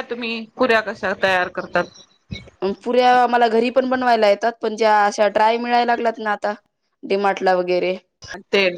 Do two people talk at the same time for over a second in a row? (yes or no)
no